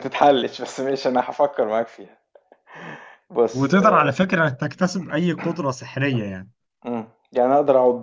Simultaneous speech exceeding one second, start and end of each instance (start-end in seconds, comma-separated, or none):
none